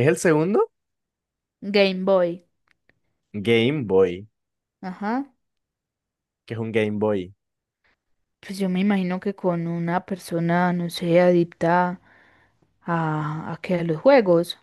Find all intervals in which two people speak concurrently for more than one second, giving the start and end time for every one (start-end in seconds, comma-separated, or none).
none